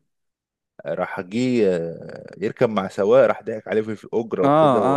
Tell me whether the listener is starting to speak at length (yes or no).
yes